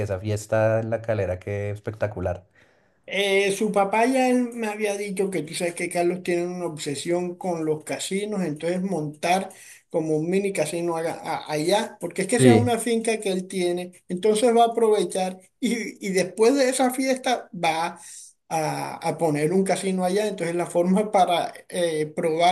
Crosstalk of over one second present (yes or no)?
no